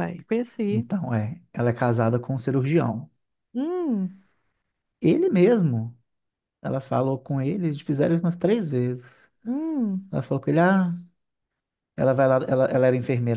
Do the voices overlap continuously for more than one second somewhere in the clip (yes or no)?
no